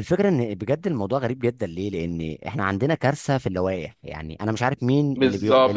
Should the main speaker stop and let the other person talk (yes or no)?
yes